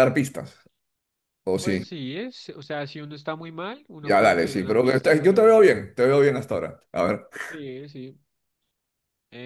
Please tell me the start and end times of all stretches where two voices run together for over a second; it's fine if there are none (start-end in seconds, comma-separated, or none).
4.0-5.7